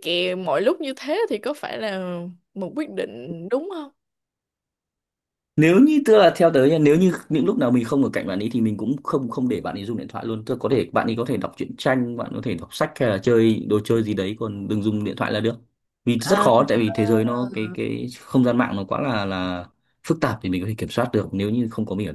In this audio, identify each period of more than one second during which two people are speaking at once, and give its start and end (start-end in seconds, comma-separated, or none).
none